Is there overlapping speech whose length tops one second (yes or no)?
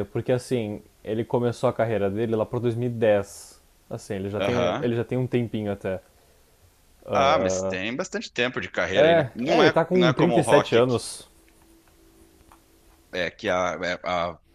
yes